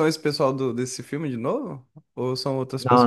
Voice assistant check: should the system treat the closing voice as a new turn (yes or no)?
yes